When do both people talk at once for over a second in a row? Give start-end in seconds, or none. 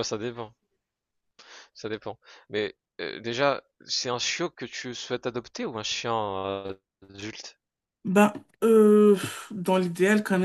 none